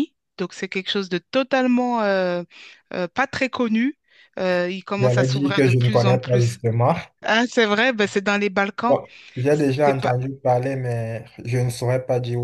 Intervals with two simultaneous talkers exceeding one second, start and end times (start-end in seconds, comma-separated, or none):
5.0-6.6